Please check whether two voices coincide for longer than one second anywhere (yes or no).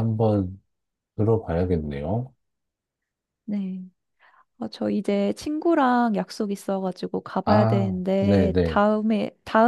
yes